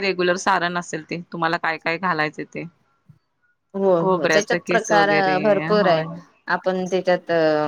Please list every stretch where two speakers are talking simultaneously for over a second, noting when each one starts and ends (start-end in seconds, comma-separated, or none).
4.0-6.0